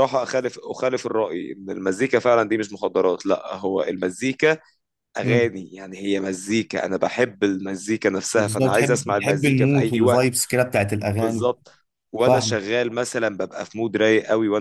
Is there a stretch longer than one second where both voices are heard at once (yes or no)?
yes